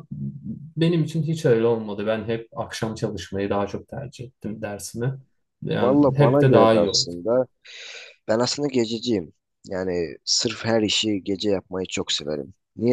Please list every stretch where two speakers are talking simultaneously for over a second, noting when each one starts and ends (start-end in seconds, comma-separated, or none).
5.7-7.1